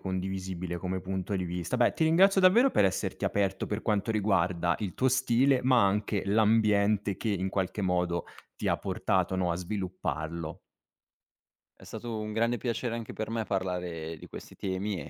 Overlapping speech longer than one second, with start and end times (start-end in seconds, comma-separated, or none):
none